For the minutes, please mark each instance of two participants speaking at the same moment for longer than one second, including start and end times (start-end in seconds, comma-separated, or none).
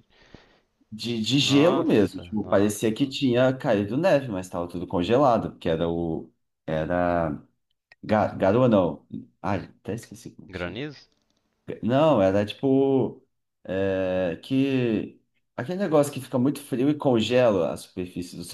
1.4-2.9